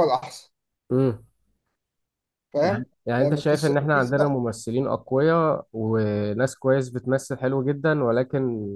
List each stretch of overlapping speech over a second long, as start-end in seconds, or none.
2.6-4.3